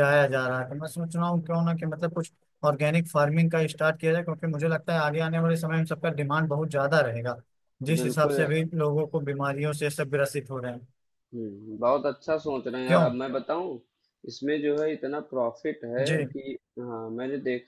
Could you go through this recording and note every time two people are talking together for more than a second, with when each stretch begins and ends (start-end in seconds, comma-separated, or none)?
none